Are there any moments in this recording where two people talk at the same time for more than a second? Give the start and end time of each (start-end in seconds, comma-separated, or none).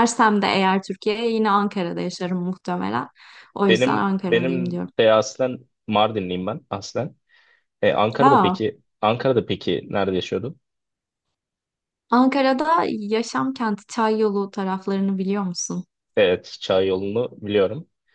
3.7-4.9